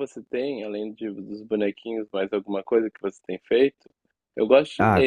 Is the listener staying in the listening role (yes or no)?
no